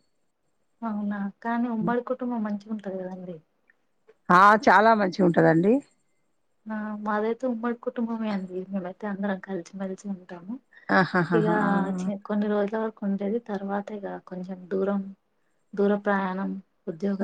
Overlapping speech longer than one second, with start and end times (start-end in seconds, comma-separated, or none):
none